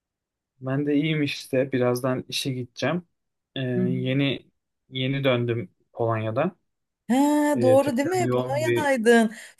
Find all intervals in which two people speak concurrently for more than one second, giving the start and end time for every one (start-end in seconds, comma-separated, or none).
7.6-8.9